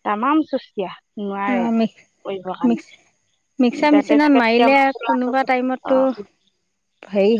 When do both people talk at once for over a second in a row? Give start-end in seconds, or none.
3.7-6.0